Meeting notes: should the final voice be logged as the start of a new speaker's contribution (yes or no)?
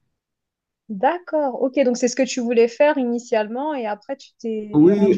yes